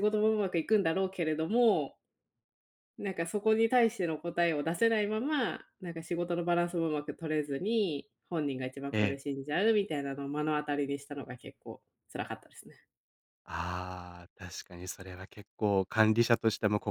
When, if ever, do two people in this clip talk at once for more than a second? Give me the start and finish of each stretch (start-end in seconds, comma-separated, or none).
none